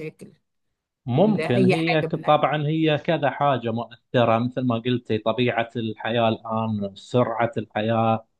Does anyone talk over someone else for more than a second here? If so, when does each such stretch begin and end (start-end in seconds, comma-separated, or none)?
1.2-2.4